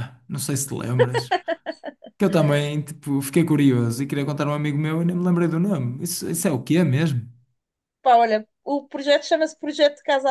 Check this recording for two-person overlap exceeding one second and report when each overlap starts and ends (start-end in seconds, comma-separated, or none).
none